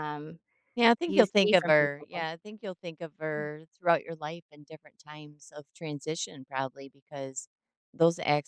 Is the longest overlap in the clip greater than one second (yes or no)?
yes